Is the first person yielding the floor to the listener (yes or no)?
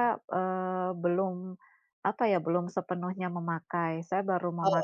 no